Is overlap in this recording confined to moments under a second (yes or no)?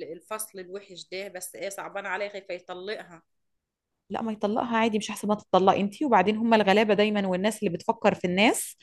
yes